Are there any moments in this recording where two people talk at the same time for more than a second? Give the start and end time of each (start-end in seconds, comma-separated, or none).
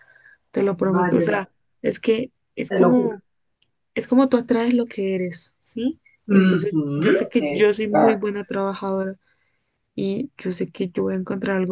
6.3-8.3